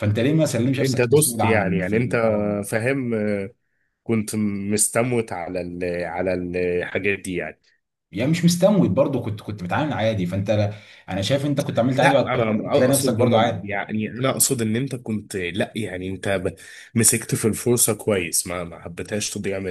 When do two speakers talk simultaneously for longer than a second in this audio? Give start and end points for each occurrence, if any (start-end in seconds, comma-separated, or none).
0.8-2.2, 12.0-13.7